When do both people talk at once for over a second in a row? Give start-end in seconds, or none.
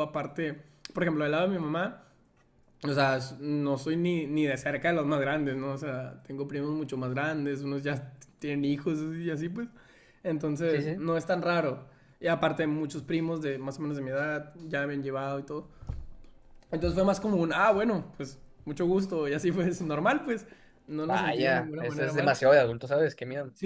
21.1-22.4